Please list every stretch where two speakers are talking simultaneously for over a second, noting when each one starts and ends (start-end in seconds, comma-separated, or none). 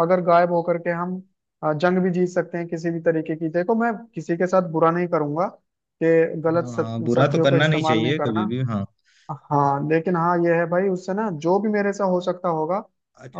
6.5-8.4